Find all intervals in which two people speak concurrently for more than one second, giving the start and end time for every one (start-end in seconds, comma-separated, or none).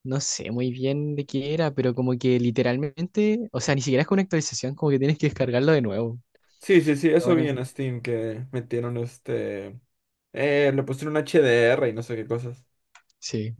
none